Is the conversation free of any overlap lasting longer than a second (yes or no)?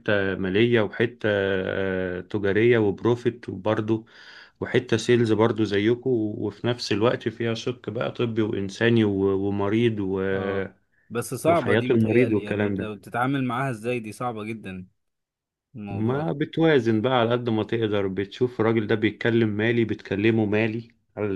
no